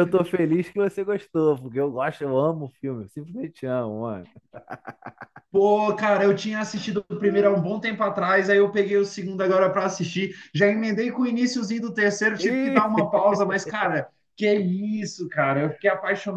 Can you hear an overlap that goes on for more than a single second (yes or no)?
no